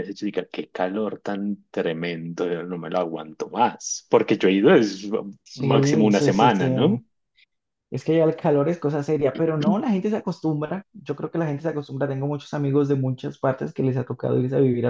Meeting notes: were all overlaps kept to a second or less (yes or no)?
no